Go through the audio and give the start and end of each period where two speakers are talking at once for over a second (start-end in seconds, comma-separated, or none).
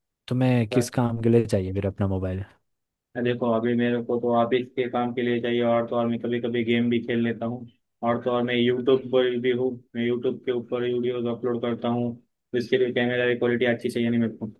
none